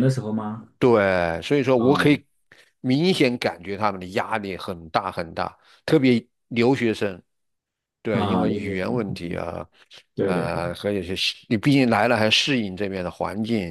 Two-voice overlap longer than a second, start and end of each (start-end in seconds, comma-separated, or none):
8.1-9.4